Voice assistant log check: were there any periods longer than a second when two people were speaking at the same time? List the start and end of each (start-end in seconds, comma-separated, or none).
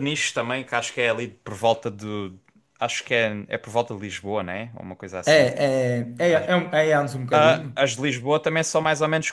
none